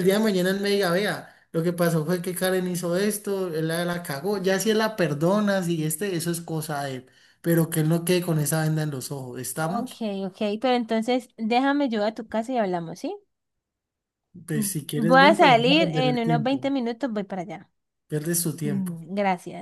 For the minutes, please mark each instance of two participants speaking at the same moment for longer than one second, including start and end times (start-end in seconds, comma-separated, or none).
14.5-16.6